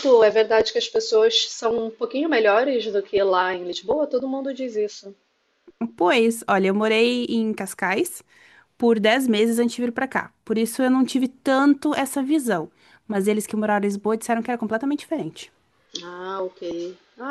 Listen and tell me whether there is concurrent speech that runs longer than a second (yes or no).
no